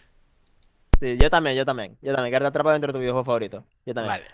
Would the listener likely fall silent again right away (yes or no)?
yes